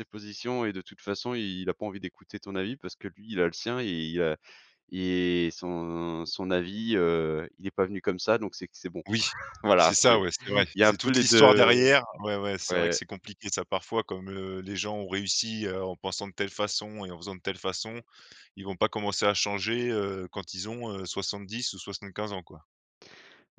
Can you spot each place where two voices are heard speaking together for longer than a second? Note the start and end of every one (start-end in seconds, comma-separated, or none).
9.8-11.7